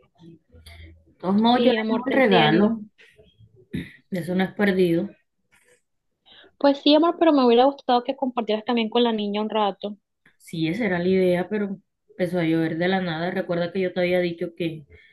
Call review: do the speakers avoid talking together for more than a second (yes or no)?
no